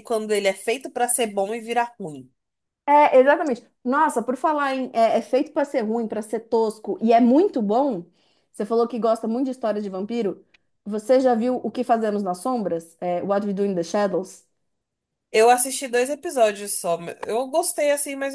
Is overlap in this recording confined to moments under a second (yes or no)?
yes